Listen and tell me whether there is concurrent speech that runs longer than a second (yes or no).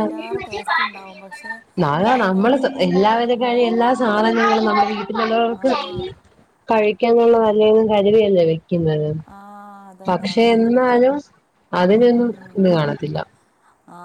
no